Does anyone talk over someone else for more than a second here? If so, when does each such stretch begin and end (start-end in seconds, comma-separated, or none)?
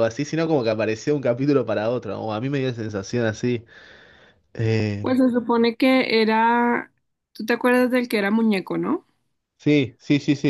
none